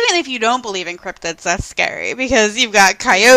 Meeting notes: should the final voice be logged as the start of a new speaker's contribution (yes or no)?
no